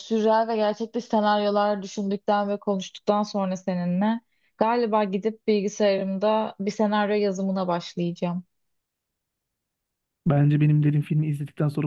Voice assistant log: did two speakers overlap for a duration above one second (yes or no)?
no